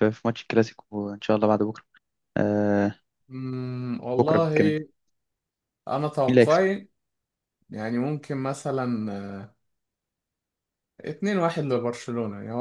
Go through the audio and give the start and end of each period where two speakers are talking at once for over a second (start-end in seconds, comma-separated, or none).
none